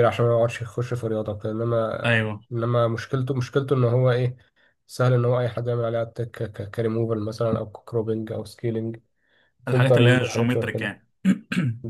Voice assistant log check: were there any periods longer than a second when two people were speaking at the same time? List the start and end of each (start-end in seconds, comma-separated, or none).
9.7-11.0